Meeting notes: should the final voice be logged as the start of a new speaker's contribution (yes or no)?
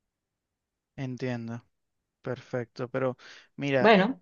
no